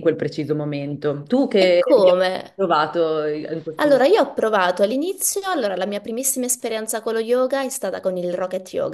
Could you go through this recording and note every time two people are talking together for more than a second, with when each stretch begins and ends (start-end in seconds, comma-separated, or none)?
none